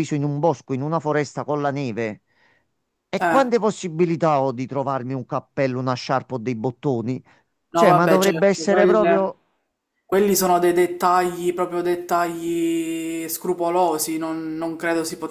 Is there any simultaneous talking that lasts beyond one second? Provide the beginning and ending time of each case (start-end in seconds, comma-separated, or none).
7.7-9.3